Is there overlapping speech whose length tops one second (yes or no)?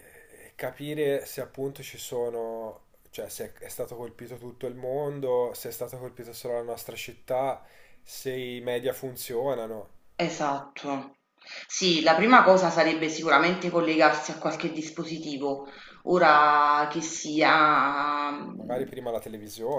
no